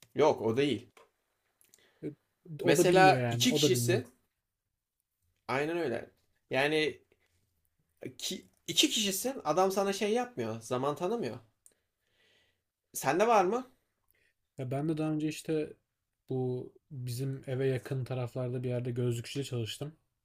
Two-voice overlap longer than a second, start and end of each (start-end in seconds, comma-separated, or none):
2.6-4.0